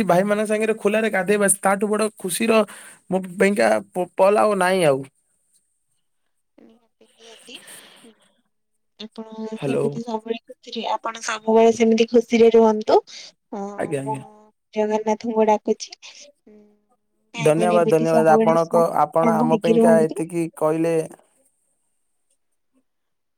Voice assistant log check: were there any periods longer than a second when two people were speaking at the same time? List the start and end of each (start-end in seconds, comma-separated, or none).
17.6-20.2